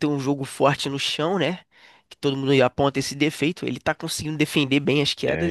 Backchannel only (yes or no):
no